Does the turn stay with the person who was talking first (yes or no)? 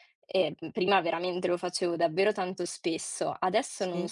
yes